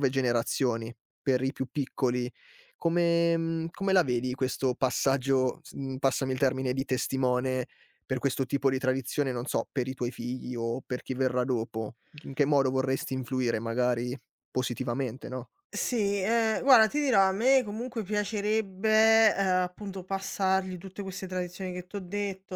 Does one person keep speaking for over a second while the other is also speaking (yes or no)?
no